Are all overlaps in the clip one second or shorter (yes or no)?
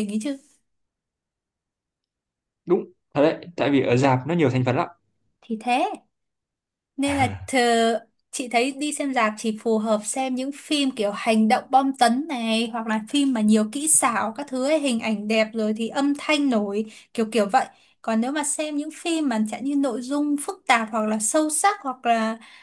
yes